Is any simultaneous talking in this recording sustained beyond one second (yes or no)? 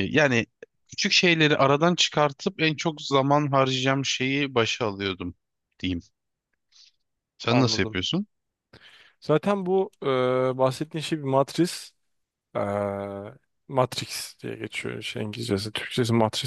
no